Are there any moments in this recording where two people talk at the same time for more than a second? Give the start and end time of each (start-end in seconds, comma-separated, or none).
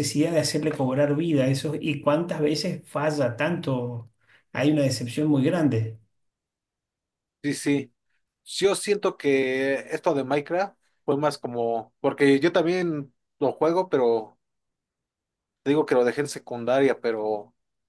none